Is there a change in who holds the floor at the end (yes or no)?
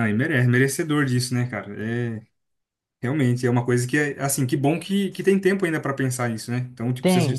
no